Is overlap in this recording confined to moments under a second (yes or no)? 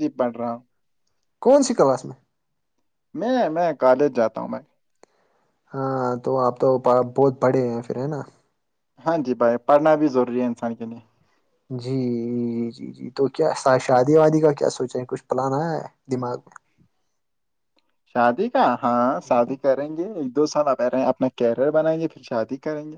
yes